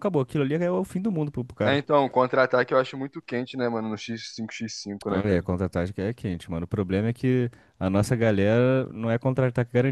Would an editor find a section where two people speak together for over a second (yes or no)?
no